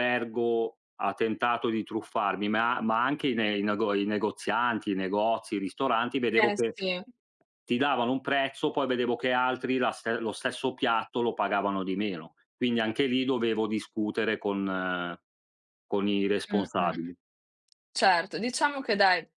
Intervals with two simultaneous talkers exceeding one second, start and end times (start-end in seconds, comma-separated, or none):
none